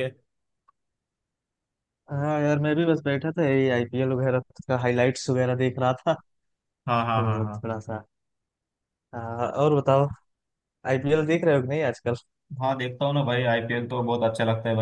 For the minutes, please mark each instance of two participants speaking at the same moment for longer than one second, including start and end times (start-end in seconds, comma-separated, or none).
none